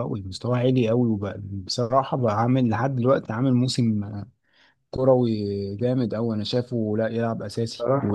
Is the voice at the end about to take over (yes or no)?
no